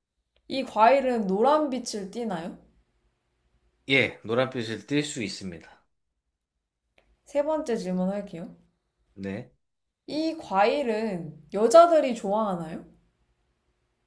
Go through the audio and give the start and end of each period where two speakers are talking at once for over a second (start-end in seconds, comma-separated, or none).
none